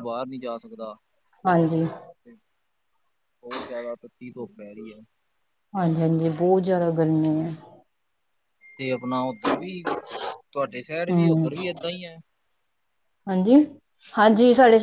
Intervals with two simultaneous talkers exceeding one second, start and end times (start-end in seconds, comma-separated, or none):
none